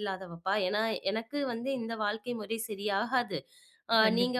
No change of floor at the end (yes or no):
yes